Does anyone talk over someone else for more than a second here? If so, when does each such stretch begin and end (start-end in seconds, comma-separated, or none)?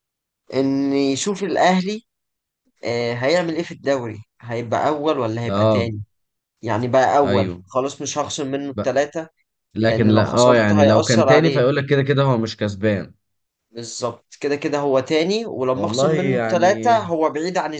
9.9-11.7, 15.7-17.0